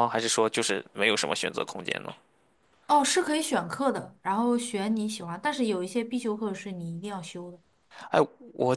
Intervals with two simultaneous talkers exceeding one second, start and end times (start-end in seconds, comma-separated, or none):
none